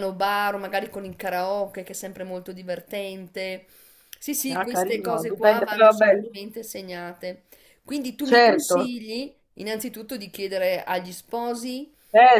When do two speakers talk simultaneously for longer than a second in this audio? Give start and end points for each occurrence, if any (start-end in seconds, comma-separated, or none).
4.5-6.2